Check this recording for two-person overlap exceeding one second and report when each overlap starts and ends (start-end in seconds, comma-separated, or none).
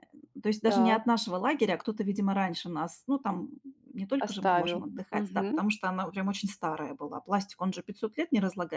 4.2-5.6